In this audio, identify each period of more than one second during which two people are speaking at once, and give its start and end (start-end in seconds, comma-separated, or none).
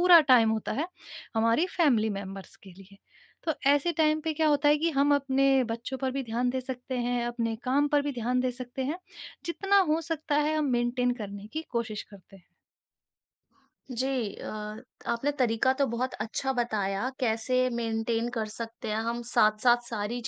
none